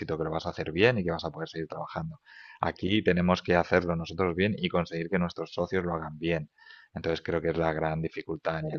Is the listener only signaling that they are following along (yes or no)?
yes